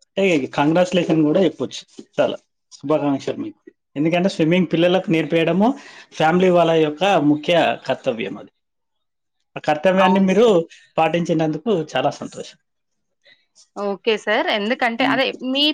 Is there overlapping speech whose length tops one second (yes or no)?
no